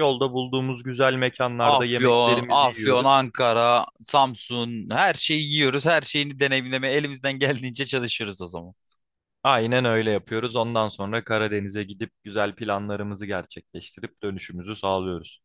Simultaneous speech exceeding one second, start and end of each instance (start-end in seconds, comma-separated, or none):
1.6-3.2